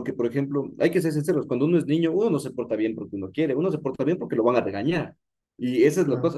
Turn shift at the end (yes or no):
no